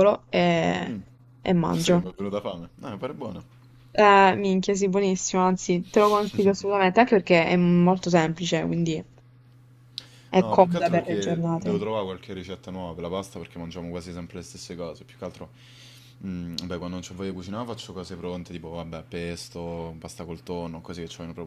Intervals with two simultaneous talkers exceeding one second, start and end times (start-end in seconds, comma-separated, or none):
10.3-11.9